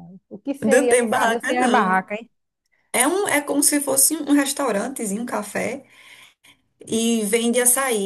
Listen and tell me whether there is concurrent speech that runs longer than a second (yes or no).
yes